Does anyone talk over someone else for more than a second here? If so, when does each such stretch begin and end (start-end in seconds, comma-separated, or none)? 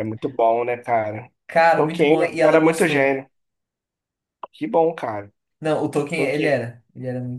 1.8-3.1